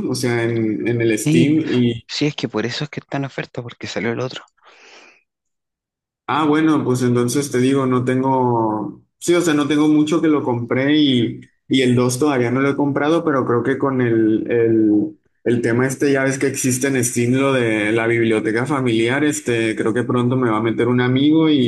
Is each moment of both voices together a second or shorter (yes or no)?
yes